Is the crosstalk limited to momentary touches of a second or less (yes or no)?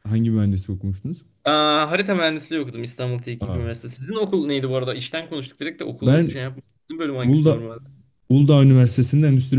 yes